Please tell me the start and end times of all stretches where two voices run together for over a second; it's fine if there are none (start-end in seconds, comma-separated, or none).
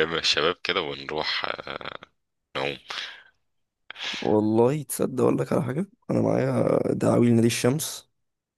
none